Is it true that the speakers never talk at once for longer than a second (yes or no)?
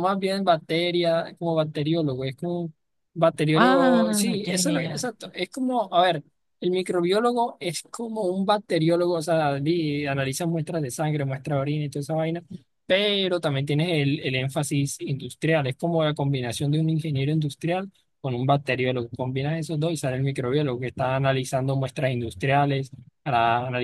no